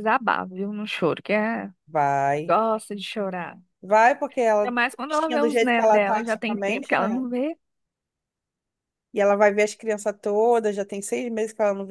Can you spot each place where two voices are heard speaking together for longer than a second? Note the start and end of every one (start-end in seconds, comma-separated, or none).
4.6-7.2